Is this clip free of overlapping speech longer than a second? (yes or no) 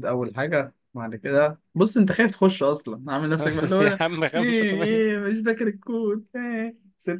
no